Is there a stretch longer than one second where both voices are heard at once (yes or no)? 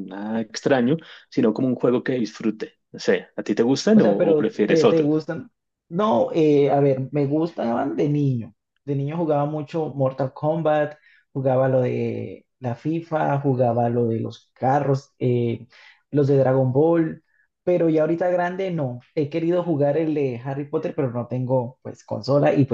yes